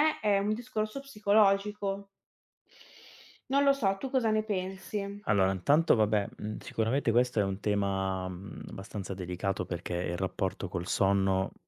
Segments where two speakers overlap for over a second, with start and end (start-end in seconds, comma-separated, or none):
none